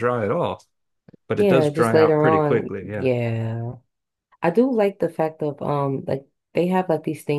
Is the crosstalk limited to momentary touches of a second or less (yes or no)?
no